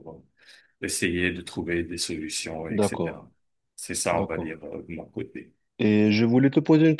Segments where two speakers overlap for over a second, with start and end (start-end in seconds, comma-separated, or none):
none